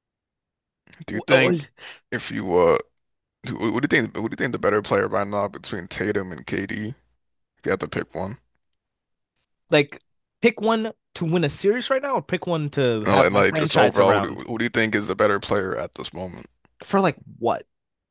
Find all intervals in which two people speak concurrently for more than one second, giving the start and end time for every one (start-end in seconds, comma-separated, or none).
13.1-14.4